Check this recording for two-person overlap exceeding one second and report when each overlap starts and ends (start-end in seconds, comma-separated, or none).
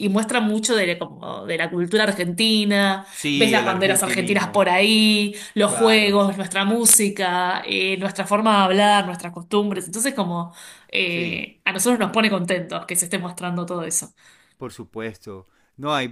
3.1-4.7